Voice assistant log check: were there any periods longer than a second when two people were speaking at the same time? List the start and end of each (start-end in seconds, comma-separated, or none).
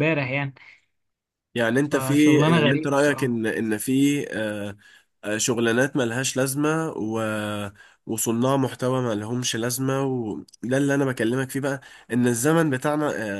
1.9-3.4